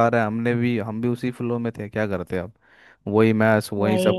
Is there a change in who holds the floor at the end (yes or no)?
no